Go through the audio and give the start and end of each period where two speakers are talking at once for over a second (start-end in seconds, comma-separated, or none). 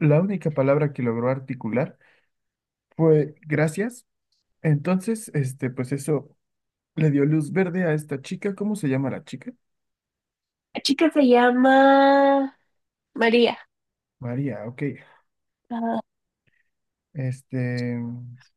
none